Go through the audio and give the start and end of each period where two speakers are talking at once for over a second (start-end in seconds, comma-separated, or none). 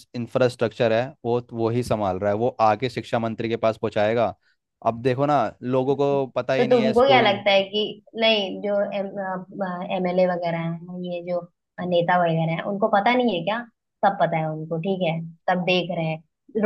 5.9-7.3